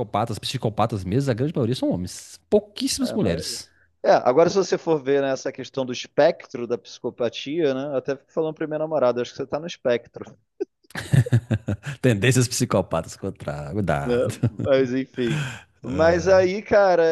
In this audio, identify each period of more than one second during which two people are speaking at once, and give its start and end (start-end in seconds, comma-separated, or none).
none